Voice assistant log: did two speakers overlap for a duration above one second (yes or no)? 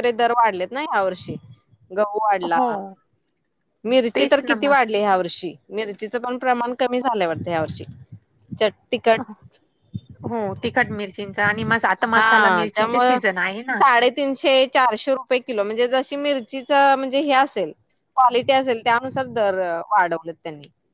no